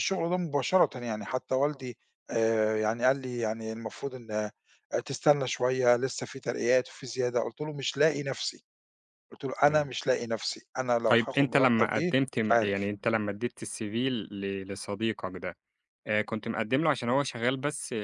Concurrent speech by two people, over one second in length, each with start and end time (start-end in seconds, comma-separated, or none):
11.1-12.9